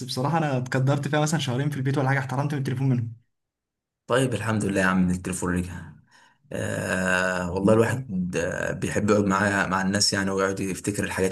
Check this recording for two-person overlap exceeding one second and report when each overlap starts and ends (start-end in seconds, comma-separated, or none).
none